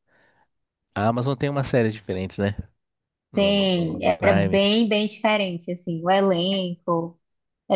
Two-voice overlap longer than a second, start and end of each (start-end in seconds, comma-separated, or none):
3.4-4.6